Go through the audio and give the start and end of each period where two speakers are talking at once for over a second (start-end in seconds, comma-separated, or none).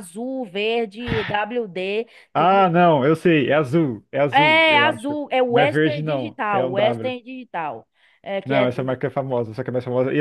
4.3-7.1